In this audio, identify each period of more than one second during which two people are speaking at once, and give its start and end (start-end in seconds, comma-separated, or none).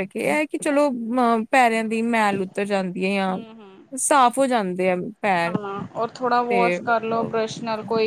none